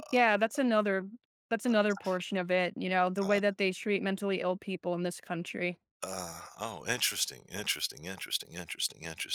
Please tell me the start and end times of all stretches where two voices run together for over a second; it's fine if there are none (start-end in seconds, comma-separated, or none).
none